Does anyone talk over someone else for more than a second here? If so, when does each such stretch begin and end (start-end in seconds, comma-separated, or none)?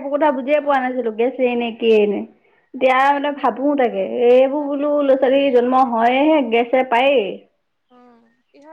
2.9-5.6